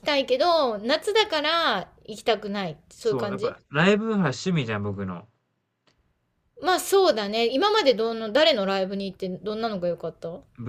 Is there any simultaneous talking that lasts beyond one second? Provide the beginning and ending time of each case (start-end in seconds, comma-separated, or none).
none